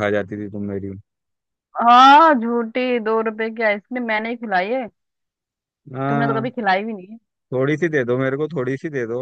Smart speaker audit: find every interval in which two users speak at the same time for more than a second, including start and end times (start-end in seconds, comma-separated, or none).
none